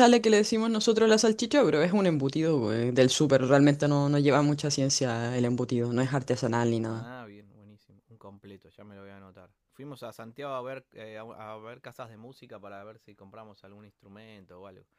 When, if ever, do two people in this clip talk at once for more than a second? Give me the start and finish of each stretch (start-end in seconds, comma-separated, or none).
none